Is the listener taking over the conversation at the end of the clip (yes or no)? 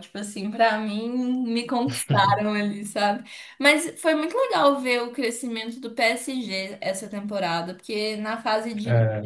no